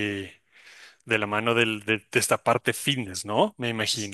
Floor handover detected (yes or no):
yes